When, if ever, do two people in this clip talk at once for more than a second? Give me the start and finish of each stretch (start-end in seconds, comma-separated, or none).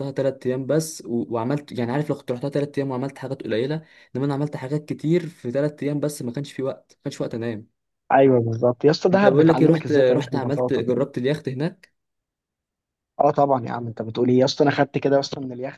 9.1-10.8